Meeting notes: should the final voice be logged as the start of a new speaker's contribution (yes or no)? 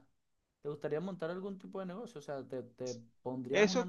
yes